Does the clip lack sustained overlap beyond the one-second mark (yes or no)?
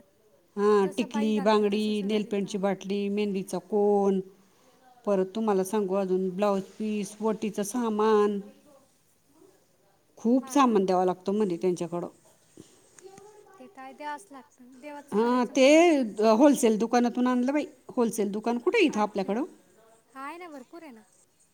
no